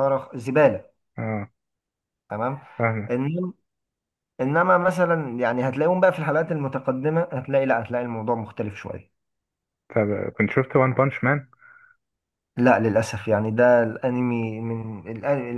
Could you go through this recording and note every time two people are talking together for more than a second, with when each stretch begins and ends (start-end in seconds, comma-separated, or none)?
none